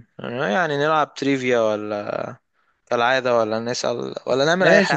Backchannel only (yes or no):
no